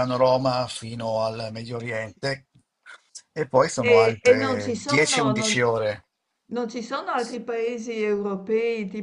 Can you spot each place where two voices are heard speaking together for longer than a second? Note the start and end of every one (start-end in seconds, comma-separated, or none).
3.9-5.6